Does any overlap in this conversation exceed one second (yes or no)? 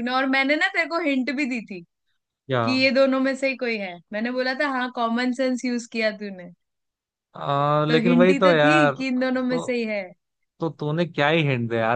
yes